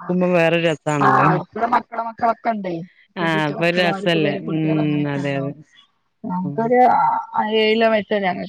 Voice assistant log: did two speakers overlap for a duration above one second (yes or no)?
yes